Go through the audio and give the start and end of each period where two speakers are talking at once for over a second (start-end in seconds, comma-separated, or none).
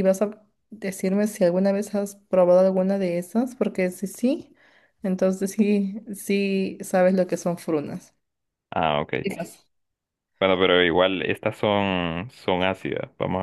none